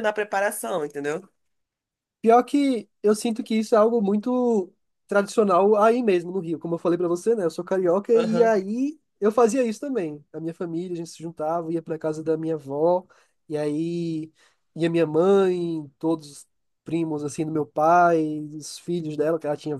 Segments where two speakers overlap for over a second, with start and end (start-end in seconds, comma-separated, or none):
none